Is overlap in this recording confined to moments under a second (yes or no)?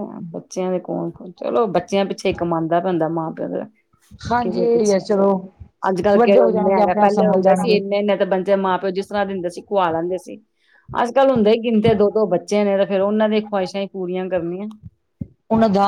no